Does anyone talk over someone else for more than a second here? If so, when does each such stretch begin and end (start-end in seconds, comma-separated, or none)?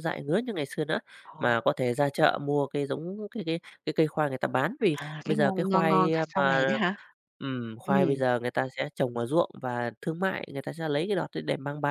4.9-6.8